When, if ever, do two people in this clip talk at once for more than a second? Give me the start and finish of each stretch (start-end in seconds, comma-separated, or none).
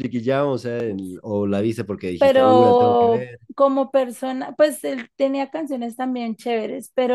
2.2-3.4